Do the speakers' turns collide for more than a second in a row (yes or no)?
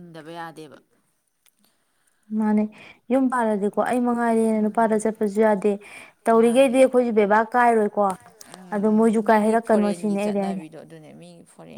yes